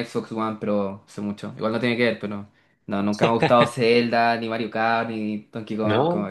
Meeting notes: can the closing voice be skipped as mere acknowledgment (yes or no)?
yes